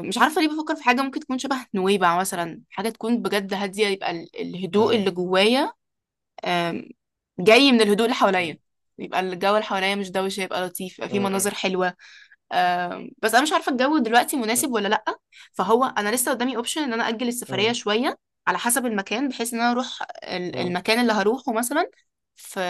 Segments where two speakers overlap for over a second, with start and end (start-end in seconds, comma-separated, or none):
none